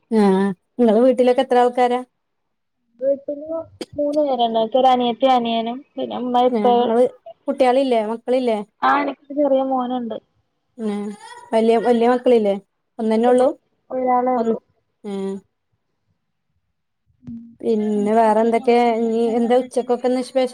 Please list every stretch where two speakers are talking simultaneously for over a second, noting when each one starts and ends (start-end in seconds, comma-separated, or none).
18.0-19.9